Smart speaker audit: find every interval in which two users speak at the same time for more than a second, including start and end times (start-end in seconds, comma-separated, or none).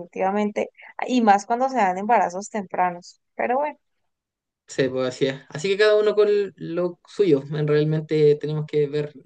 none